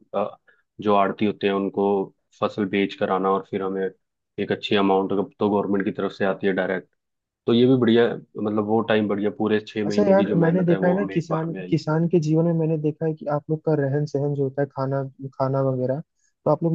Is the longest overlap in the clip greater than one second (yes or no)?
yes